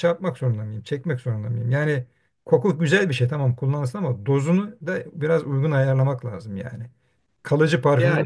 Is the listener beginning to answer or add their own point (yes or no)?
no